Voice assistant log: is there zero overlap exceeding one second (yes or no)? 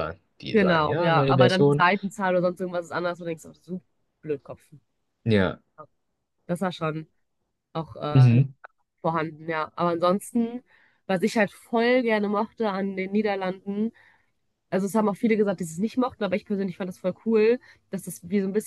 no